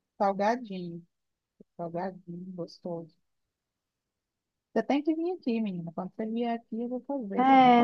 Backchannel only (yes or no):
no